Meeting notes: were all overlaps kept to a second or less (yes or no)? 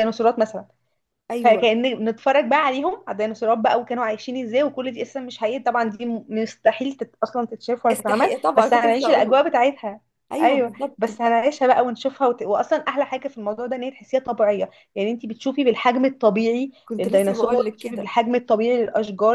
no